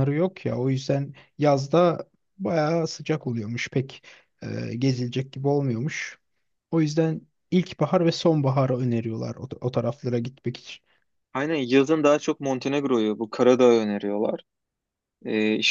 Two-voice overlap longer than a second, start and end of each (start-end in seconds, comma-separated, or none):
none